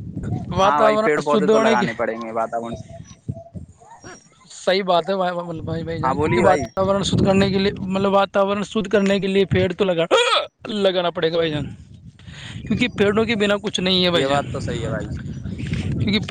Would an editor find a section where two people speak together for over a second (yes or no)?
yes